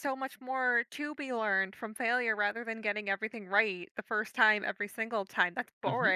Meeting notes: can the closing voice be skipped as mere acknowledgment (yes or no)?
no